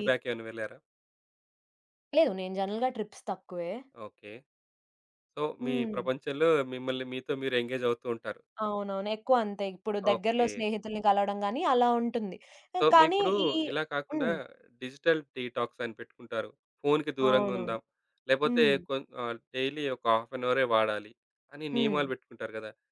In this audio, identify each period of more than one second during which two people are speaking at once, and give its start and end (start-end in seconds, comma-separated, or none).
none